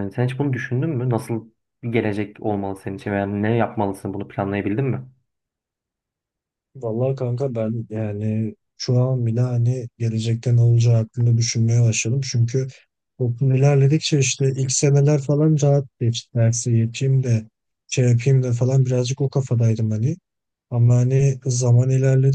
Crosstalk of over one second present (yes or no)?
no